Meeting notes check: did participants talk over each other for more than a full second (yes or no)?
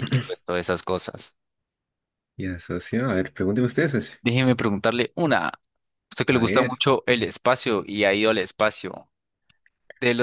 no